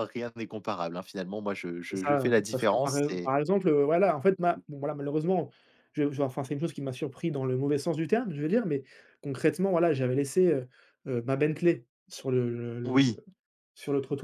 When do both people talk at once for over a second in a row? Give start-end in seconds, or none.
1.9-3.3